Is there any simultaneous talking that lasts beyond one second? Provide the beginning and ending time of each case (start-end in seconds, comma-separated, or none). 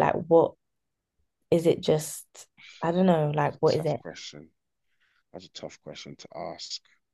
none